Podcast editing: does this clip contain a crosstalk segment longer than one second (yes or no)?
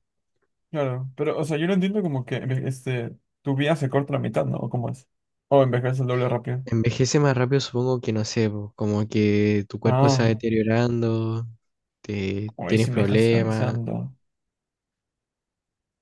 yes